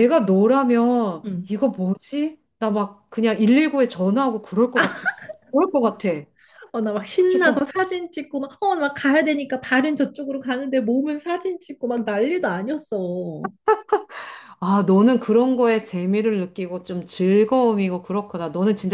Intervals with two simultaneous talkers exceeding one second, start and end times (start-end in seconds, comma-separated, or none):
none